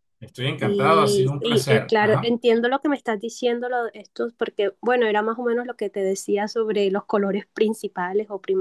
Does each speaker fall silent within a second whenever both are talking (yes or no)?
no